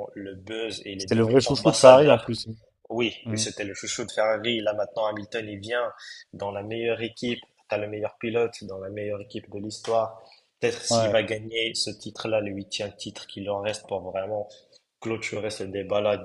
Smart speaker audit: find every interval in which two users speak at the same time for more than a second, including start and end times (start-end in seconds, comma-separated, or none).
1.0-2.3